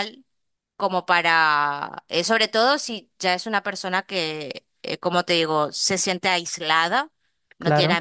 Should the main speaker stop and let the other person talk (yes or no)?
no